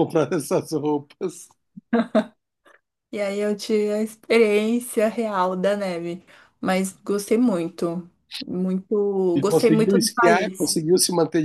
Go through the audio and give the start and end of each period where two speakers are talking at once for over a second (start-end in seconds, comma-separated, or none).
9.3-10.7